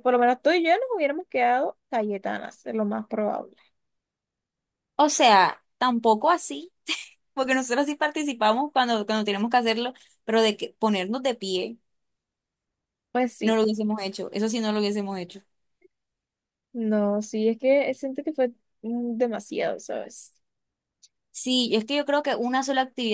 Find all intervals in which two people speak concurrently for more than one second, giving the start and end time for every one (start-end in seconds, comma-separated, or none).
none